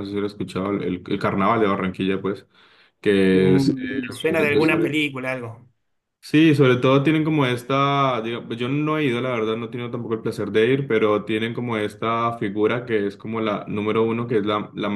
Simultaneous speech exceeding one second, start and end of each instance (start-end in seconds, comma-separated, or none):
3.3-5.0